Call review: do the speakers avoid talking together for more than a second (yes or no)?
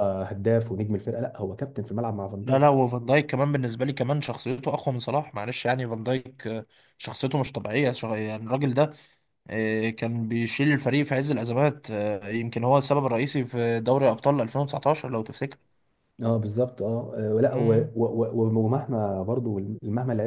yes